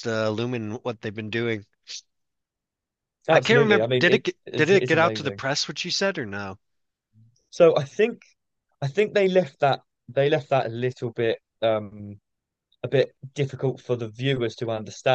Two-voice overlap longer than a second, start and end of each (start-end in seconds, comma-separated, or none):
3.3-5.4